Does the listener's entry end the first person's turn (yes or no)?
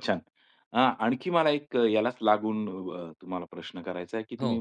no